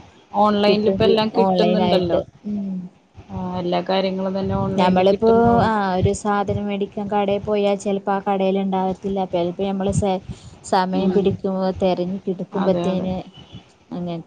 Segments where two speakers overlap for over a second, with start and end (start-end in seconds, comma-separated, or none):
0.7-2.1